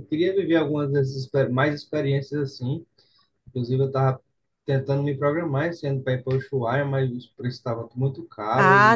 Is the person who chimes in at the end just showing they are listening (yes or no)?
no